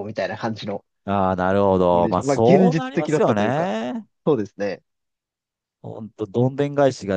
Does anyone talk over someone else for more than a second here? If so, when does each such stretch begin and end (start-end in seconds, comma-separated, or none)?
1.9-3.7